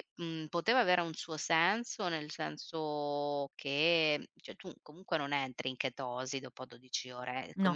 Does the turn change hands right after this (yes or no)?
no